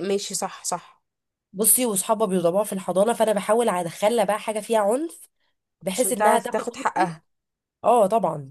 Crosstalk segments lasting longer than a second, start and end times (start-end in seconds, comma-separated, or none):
5.9-7.1